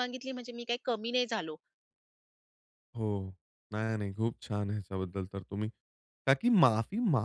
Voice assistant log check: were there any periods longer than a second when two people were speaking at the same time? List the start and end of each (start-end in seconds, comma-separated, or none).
none